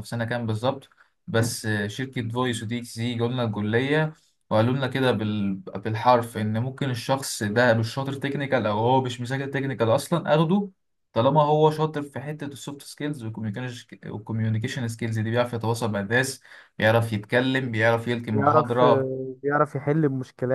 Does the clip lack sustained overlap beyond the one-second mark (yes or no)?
yes